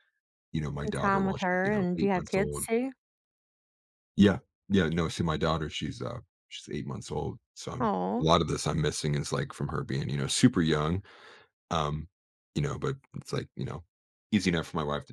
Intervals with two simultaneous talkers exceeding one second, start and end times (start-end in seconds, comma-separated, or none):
0.8-2.7